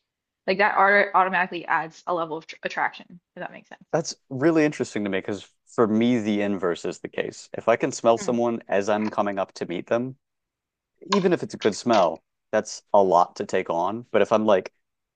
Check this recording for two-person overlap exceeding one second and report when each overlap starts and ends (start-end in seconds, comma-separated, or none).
none